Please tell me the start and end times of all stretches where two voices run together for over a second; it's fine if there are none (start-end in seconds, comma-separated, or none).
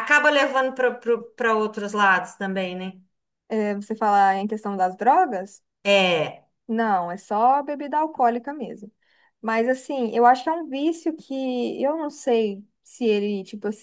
none